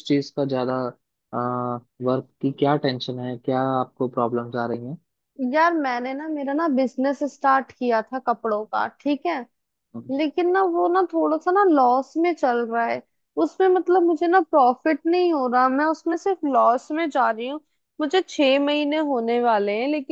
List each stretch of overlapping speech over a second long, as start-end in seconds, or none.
none